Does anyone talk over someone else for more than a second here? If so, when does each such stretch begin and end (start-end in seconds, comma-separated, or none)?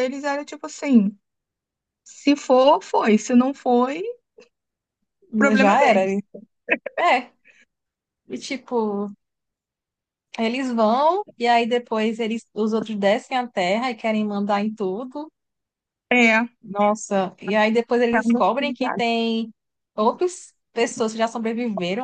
none